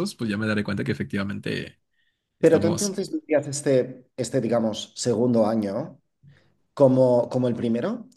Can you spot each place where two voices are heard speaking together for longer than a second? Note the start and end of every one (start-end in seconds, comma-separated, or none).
none